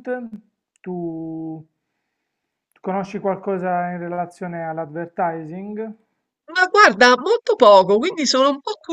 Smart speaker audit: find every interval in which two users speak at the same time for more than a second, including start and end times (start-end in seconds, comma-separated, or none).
none